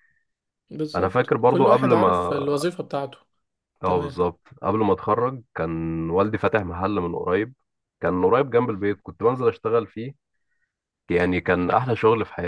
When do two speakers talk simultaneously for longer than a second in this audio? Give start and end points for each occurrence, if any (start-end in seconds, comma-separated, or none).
0.9-2.3